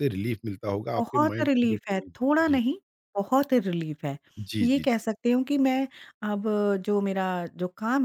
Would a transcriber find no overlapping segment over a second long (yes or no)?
no